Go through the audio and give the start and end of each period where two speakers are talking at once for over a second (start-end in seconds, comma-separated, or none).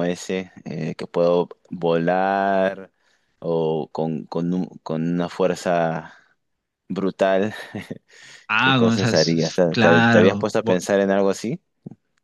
8.6-10.8